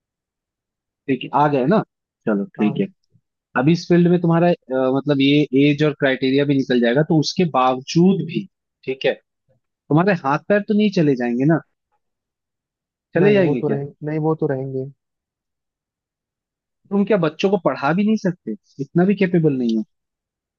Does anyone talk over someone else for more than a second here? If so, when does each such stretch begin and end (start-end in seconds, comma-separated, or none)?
none